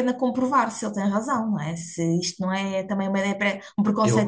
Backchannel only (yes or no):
no